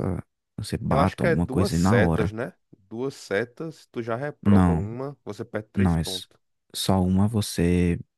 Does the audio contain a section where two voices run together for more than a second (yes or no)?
yes